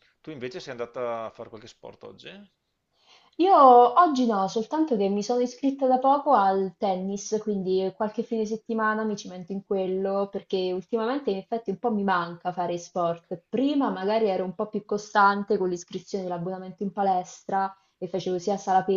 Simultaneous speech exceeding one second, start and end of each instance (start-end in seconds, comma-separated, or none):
none